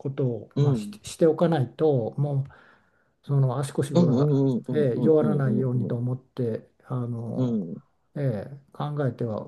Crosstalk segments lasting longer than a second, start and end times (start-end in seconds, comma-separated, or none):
3.9-5.9